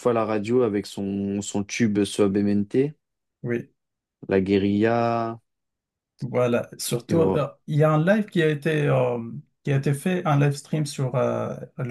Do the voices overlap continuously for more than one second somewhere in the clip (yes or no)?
no